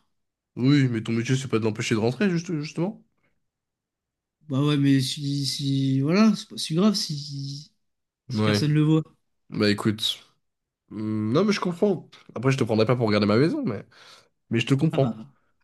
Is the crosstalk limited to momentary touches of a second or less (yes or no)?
yes